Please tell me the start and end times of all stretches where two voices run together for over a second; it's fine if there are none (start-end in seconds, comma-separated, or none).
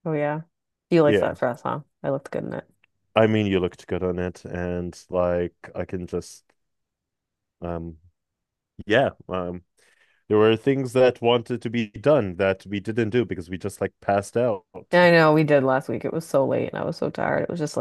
none